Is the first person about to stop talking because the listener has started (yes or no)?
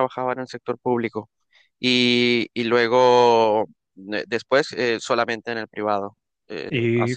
yes